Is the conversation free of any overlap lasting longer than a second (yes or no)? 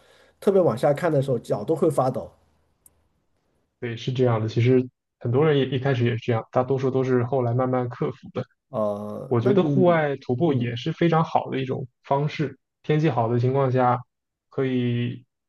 no